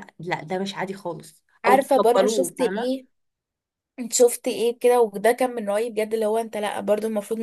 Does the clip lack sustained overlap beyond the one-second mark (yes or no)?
no